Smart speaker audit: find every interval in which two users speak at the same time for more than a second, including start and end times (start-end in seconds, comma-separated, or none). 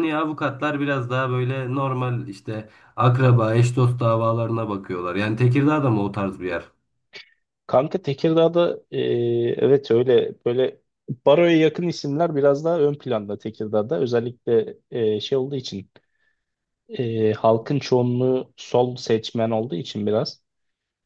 none